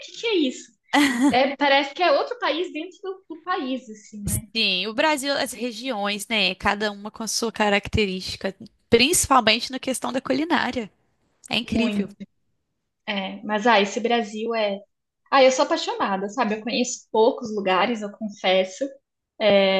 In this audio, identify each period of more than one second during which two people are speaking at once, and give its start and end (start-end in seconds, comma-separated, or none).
none